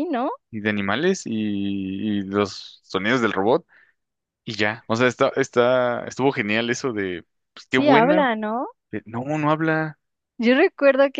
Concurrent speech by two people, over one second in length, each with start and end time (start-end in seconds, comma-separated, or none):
none